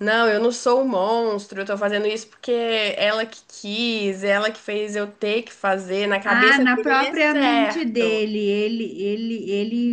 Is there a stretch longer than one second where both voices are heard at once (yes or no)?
yes